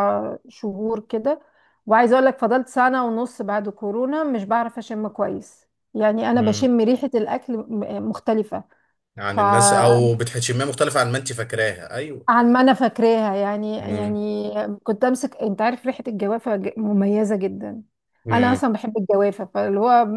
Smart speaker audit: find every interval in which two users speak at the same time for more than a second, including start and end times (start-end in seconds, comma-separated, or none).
none